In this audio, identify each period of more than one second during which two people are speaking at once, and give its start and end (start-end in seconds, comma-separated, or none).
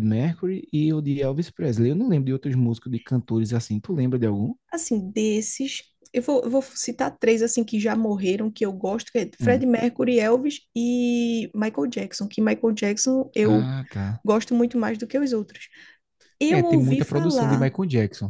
16.5-17.7